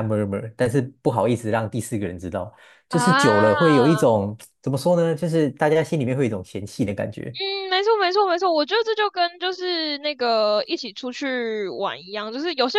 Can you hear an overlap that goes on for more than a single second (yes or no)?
yes